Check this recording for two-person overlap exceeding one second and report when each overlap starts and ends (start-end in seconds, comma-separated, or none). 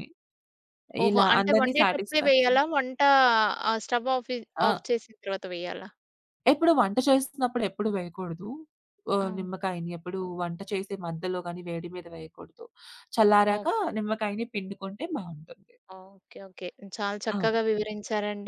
1.1-2.6